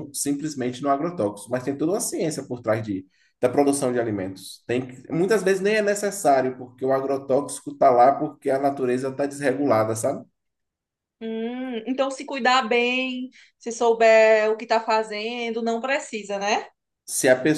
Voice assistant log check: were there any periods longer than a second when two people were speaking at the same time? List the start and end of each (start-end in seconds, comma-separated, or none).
none